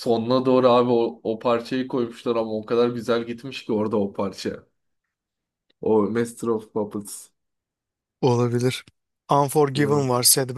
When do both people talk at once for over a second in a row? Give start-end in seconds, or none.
none